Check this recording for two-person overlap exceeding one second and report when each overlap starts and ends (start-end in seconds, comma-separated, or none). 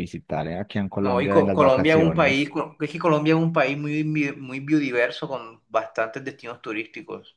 1.0-2.5